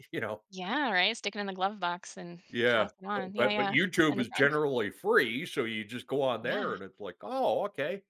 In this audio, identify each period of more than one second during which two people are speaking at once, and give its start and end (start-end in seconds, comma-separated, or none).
2.5-4.5